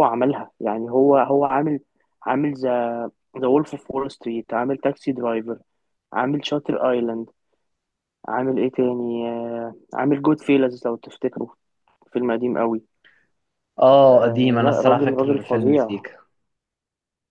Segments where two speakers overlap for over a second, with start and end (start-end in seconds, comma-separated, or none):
14.1-15.9